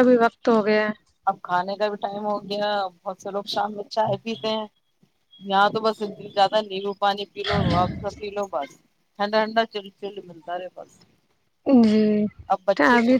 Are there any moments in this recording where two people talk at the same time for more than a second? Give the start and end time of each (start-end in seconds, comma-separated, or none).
none